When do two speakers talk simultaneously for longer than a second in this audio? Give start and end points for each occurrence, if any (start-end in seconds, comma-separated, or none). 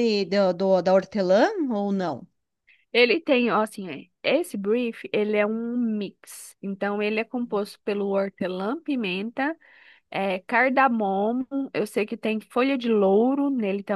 none